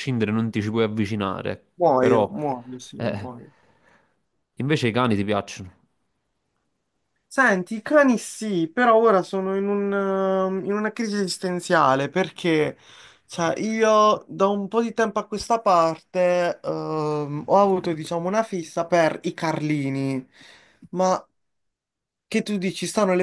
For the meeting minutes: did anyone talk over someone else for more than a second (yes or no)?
no